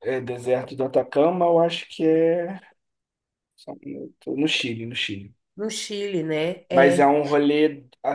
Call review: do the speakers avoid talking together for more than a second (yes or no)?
yes